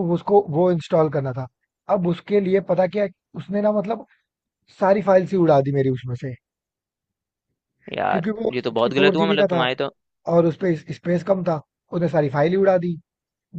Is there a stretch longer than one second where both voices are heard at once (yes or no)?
yes